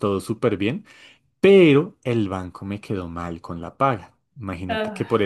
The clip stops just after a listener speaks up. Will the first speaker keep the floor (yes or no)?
yes